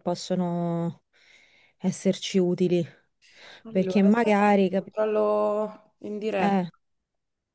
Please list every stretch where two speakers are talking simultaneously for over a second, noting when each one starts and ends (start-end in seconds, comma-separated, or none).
3.7-4.9